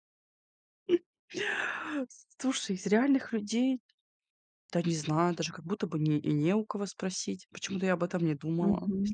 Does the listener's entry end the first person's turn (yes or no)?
yes